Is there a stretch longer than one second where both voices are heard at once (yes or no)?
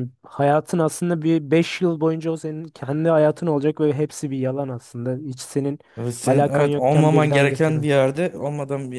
yes